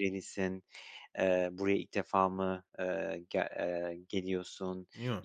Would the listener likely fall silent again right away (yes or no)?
yes